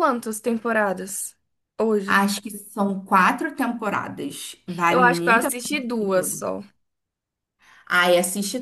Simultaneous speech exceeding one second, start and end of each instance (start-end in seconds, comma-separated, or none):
4.9-6.4